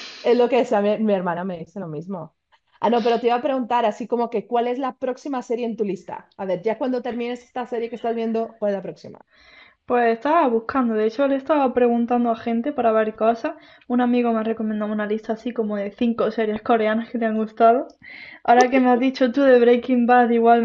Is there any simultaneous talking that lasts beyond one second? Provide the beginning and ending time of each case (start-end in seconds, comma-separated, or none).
none